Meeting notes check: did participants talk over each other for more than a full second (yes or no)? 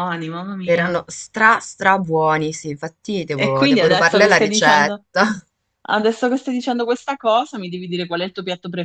yes